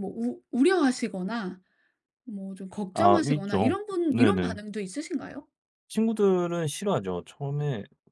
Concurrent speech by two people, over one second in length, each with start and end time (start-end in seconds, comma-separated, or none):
2.9-4.6